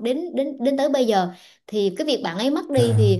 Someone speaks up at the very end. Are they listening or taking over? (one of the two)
listening